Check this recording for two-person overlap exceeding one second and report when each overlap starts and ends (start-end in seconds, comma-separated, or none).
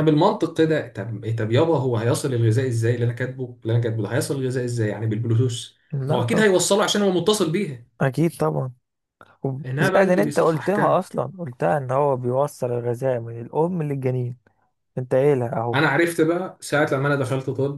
9.8-11.0